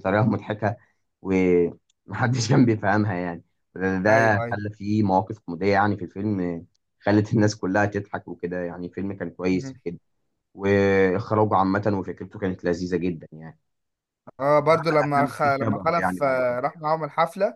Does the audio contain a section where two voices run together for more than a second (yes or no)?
yes